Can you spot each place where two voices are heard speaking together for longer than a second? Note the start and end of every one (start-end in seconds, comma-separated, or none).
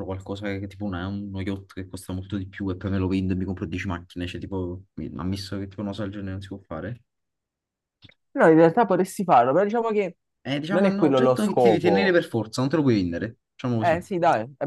10.7-12.2